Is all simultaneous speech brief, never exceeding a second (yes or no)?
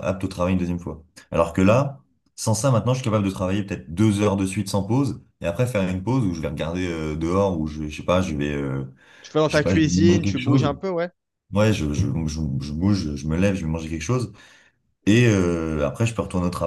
no